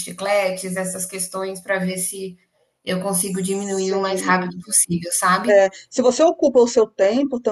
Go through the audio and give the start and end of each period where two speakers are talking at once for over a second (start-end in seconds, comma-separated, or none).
3.2-4.6